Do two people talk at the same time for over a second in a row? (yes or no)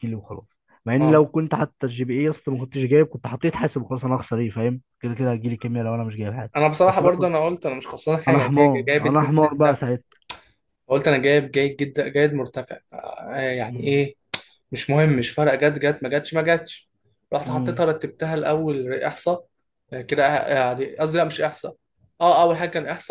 yes